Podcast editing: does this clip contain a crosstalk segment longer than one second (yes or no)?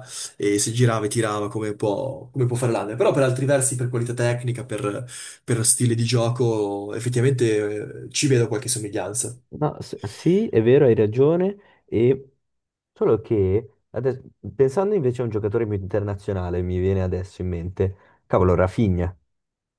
no